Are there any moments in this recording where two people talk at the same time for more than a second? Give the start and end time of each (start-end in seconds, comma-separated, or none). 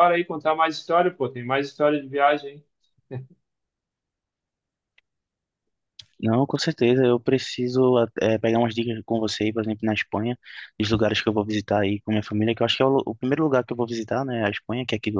none